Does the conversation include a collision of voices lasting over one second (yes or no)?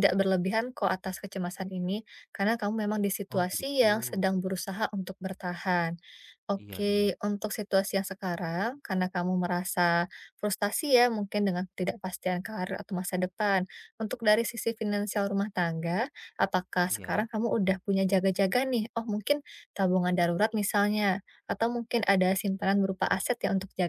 no